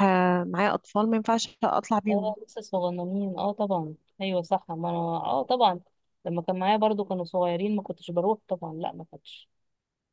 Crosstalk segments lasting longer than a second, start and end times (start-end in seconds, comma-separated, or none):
none